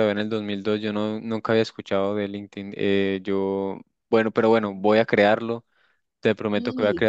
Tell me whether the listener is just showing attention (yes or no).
yes